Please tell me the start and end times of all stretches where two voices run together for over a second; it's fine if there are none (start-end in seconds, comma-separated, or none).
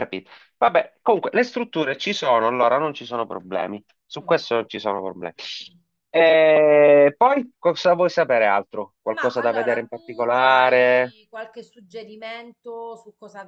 9.1-11.2